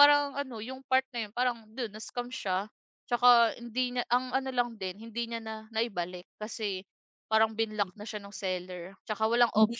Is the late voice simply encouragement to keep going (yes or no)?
yes